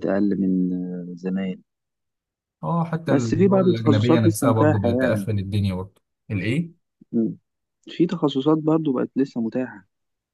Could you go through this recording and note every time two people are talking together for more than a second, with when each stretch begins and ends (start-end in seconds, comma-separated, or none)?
3.1-5.3